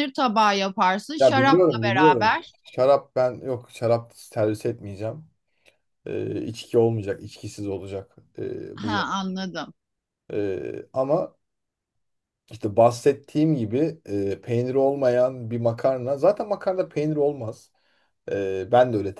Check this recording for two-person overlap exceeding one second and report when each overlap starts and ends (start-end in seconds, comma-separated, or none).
1.2-2.5